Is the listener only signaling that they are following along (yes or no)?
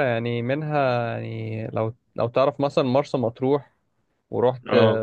yes